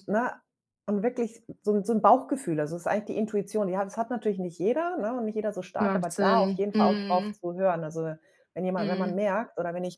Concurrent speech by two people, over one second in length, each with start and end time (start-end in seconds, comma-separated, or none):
5.8-7.4